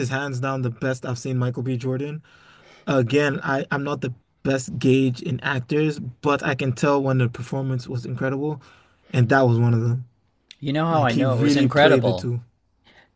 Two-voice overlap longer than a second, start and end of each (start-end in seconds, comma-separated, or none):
10.9-12.3